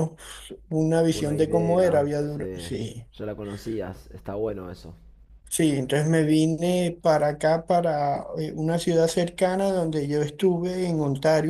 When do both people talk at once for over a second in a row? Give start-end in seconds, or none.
1.1-2.6